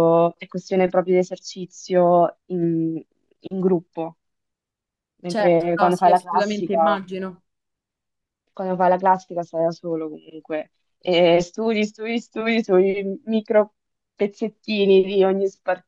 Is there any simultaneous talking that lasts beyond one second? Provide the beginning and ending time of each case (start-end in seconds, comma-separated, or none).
5.2-7.0